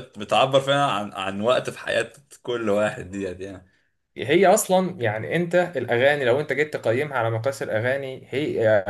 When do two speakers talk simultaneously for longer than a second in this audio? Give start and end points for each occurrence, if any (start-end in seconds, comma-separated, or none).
none